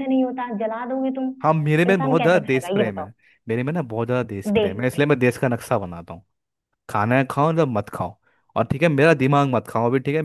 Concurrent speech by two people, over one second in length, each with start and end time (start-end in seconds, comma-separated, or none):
1.9-3.1